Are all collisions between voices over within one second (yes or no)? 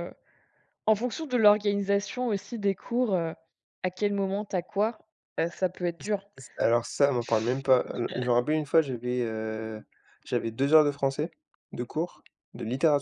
yes